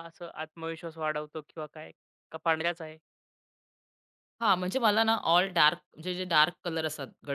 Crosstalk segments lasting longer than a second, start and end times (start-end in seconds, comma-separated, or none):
none